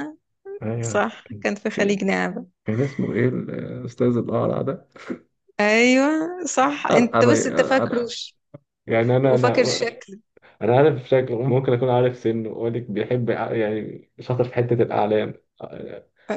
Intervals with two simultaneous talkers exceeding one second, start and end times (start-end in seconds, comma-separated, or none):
6.9-8.1